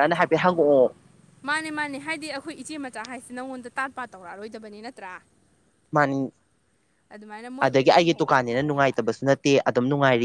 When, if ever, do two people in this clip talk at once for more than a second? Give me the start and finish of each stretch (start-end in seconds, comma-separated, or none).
7.7-8.9